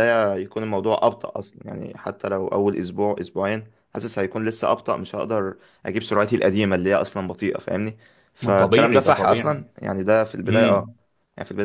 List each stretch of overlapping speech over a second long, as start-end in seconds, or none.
8.4-9.7